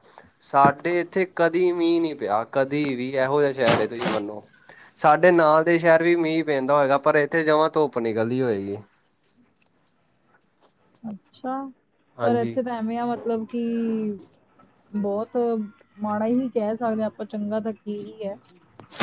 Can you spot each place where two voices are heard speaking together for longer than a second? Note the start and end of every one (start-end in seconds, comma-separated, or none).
none